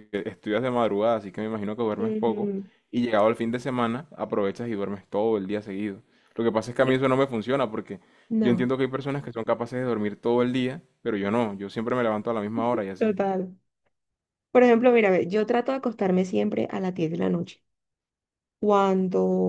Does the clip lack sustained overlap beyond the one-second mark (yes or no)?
yes